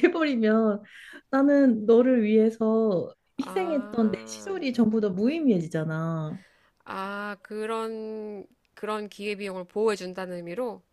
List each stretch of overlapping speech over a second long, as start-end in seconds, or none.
3.4-4.6